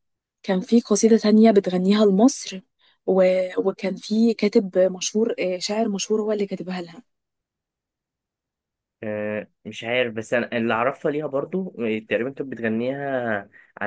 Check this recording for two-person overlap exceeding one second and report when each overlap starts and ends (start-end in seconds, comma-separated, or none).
none